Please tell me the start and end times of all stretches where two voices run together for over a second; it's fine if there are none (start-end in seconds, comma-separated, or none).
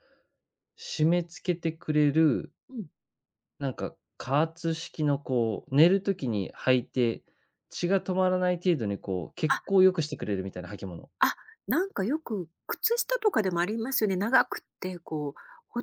none